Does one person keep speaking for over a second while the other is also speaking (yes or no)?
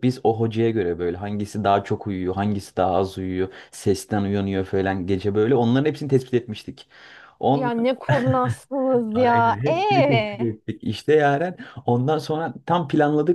yes